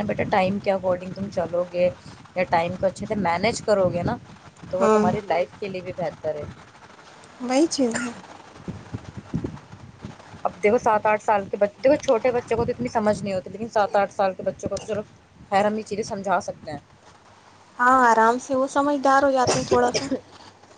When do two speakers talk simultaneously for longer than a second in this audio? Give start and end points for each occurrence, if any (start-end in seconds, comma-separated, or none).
none